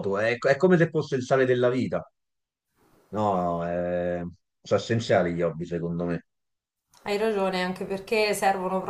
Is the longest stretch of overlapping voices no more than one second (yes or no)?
yes